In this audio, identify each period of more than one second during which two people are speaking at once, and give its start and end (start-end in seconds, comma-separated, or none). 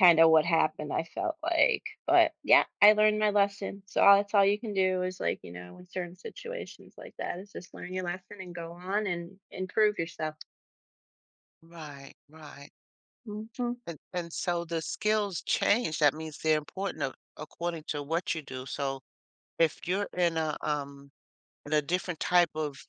none